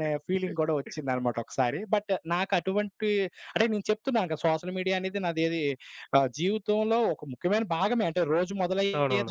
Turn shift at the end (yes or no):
no